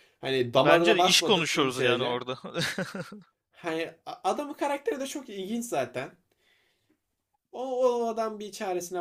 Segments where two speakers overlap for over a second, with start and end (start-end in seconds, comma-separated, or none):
0.6-2.2